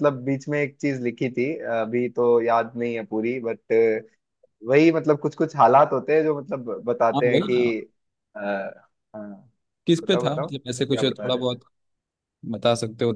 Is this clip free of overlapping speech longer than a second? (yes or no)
no